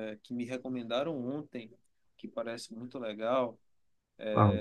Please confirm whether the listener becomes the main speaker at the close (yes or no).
no